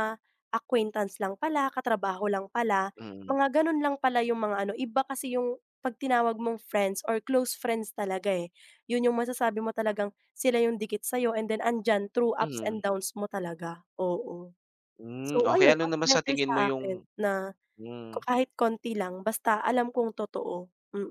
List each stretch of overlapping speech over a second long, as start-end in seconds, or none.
15.2-17.0